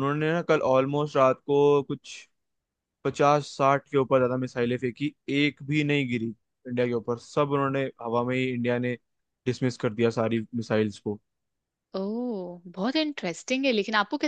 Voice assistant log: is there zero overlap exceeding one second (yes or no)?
yes